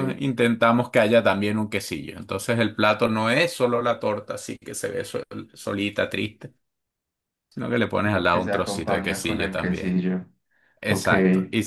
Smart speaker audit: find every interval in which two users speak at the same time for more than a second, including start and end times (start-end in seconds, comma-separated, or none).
8.0-10.0